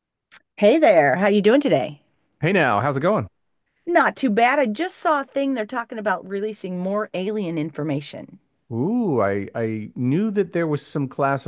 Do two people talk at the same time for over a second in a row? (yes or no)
no